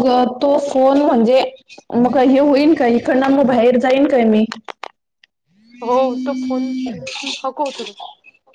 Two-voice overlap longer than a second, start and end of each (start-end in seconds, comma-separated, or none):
none